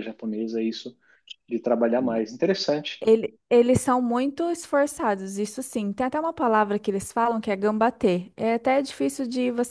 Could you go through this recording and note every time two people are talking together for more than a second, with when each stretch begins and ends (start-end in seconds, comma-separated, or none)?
none